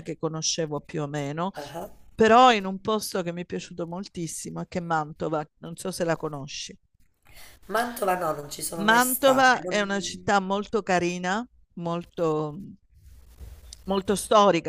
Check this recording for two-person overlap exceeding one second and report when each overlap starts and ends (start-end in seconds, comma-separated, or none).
8.8-10.3